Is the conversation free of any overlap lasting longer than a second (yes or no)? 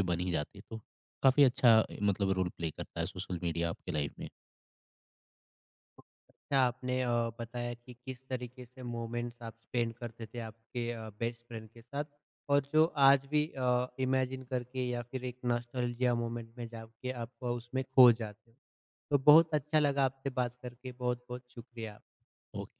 yes